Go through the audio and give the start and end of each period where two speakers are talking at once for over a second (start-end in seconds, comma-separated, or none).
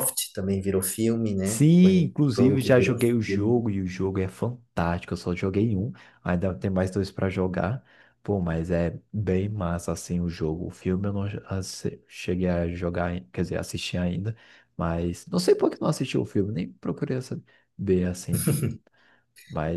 1.4-3.5